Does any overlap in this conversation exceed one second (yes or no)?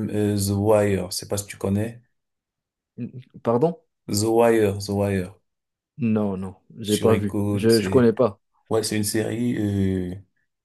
yes